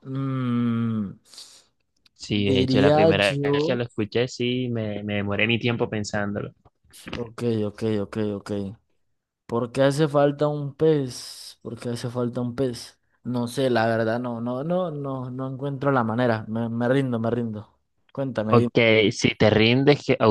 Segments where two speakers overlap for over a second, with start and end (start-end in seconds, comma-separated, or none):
2.5-3.8